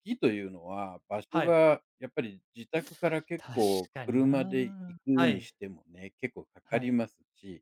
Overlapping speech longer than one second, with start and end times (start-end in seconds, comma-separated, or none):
3.4-5.5